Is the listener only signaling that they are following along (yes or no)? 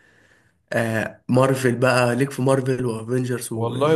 no